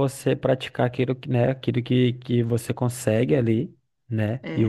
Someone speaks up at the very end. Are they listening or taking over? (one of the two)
listening